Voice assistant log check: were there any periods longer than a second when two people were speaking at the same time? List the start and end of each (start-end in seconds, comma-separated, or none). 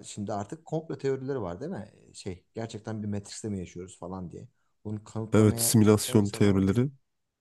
5.3-6.7